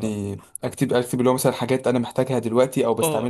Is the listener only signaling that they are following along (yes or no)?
no